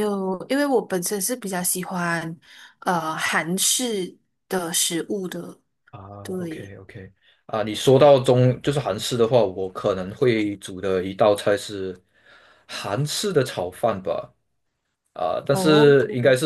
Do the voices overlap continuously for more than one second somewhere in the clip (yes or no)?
no